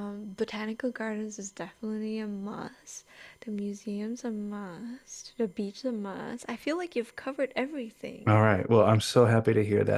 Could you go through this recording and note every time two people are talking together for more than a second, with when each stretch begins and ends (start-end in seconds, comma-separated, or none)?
none